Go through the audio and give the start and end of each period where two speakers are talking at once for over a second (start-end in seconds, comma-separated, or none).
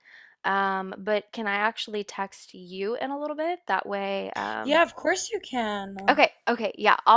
none